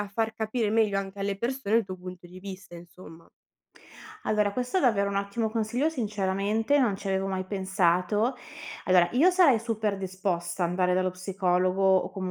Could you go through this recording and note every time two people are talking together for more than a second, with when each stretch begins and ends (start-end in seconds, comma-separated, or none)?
none